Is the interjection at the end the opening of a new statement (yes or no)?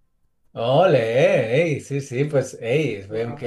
no